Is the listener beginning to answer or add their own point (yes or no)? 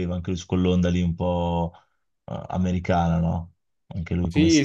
yes